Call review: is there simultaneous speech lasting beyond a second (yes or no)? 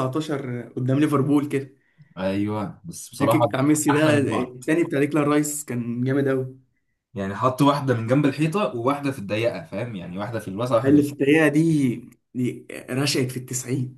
yes